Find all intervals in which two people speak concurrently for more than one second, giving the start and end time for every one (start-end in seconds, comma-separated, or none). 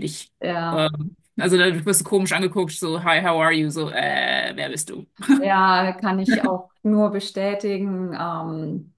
none